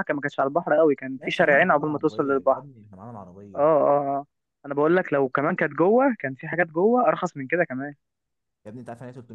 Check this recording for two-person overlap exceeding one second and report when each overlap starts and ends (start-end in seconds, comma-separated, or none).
1.2-2.6